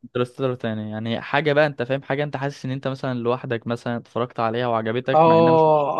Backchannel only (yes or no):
no